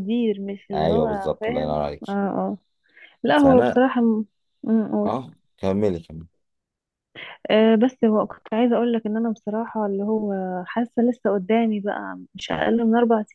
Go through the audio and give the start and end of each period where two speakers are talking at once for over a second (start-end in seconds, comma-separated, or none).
0.7-2.0